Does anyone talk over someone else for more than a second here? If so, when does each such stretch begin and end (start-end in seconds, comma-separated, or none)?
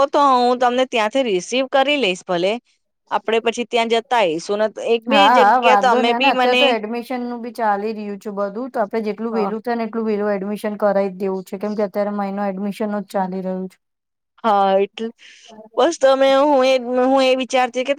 5.1-6.6